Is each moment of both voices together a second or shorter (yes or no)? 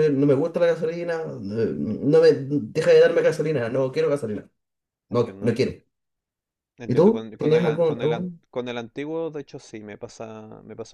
no